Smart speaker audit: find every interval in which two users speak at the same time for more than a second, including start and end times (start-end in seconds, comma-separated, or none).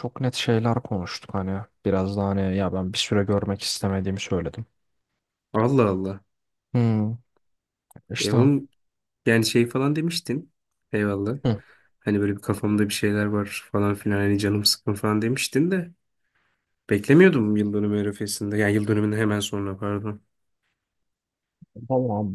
none